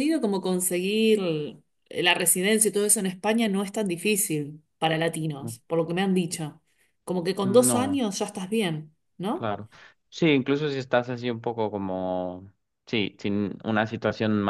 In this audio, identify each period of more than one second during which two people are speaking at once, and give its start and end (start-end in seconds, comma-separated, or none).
none